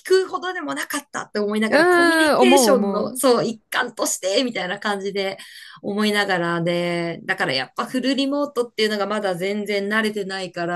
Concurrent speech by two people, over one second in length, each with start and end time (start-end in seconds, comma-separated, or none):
1.7-3.2